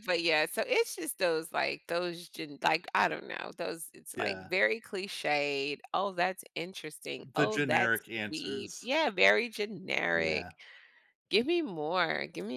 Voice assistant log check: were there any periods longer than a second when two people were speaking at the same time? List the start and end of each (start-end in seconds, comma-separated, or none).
7.2-8.9